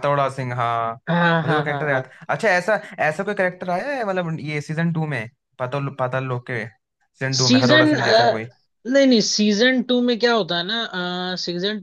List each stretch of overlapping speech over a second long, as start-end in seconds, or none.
none